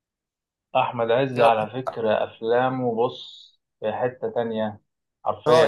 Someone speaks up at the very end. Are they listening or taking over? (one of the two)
taking over